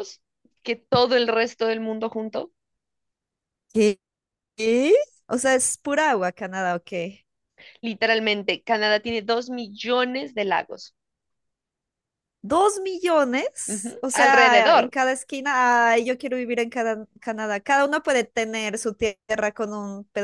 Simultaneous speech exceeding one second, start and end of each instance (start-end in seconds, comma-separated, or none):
13.7-14.9